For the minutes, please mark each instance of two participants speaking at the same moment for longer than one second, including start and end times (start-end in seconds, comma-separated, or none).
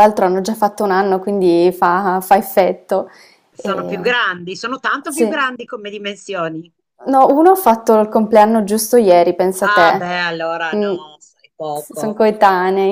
none